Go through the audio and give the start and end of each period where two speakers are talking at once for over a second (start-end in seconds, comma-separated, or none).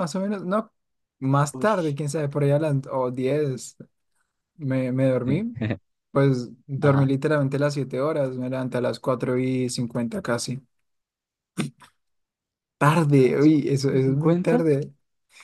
13.2-14.6